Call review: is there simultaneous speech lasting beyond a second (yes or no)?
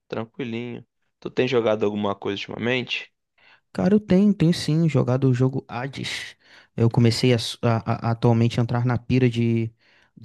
no